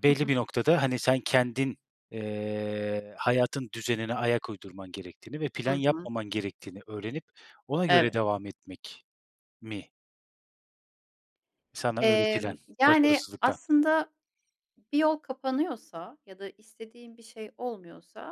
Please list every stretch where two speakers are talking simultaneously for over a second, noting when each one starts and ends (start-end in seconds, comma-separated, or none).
12.0-13.6